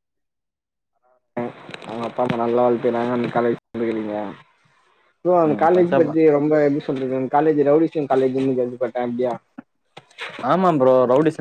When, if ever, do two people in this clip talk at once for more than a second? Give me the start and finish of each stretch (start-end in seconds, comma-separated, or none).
none